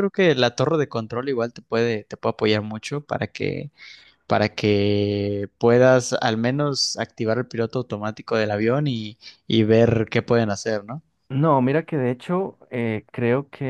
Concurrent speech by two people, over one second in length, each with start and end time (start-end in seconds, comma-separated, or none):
none